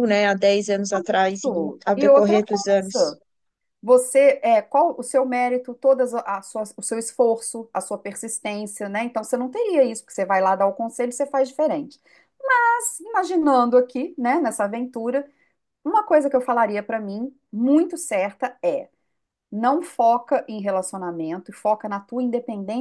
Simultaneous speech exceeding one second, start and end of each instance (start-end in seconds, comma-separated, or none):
1.4-3.2